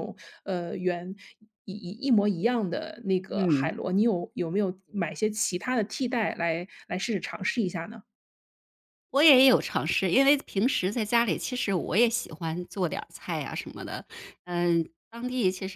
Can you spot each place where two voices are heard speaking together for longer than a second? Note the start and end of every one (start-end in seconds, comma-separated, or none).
none